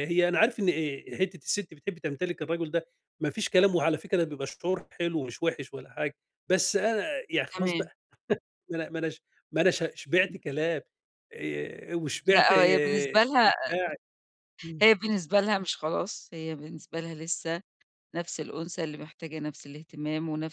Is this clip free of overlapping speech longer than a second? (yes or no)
no